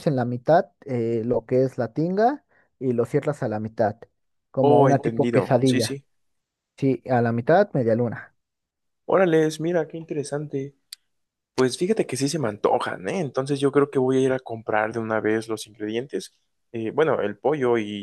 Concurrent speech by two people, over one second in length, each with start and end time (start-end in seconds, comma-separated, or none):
4.6-6.0